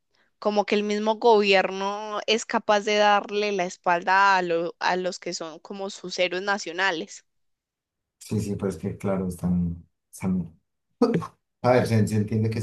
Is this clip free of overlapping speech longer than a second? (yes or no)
yes